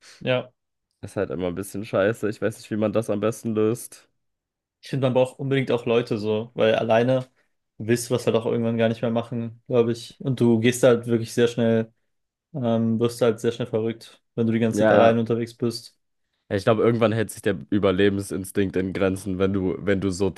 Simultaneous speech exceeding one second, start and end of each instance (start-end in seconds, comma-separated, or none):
none